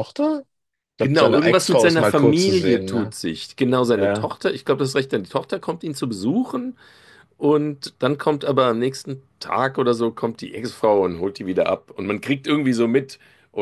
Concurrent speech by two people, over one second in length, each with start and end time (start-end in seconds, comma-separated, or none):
1.0-3.1